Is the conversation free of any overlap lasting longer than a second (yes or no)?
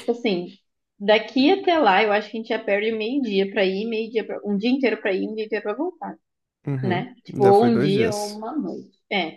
no